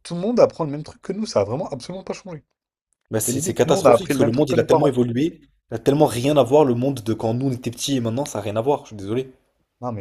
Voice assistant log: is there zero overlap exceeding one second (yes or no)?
no